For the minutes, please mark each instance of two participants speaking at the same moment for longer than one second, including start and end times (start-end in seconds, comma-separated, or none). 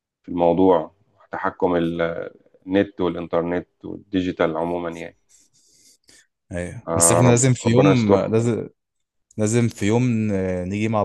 6.9-8.3